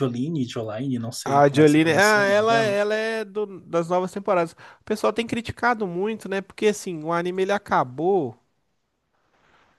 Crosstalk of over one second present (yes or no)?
yes